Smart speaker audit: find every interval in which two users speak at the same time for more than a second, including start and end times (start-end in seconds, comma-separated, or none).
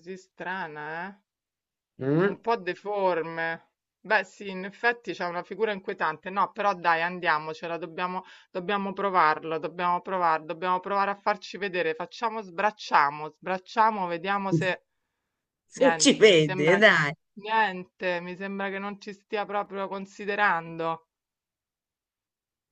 15.7-17.1